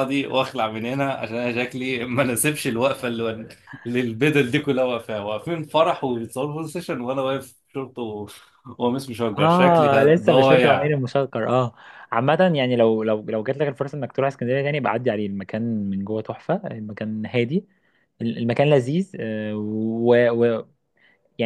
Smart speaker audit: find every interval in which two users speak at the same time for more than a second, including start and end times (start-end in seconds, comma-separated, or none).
9.4-10.9